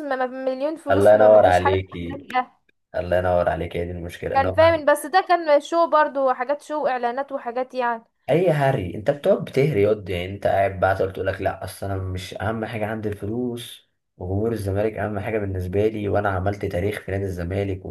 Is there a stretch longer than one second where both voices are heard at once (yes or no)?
yes